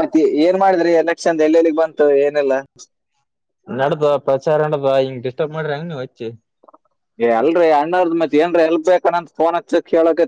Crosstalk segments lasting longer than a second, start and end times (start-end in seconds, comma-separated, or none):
none